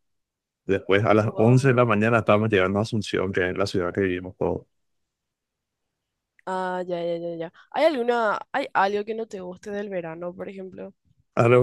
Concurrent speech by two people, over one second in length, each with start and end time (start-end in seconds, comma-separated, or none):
none